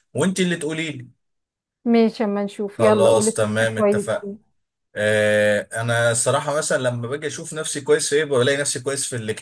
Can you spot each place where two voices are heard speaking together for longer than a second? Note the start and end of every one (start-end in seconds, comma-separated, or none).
2.7-4.3